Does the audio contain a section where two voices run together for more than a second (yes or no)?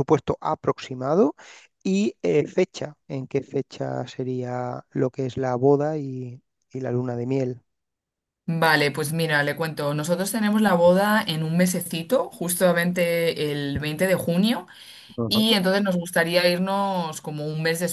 no